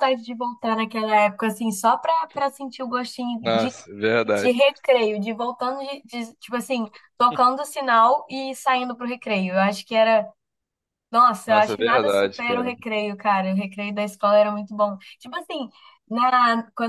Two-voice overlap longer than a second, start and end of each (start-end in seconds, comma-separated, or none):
11.5-12.7